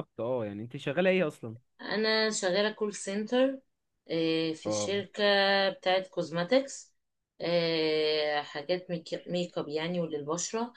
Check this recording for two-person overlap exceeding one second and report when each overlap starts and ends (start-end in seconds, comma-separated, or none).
none